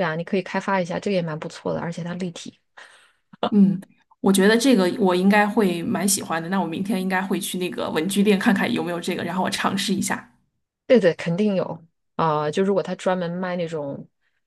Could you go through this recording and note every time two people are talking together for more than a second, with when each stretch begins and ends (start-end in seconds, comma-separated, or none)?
none